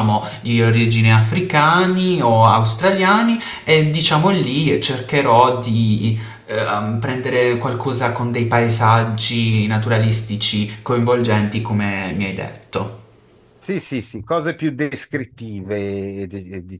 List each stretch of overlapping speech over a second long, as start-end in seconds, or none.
none